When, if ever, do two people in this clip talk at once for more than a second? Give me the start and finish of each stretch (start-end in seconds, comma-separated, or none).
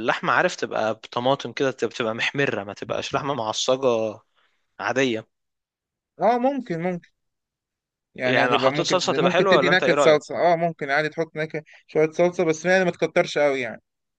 8.2-10.2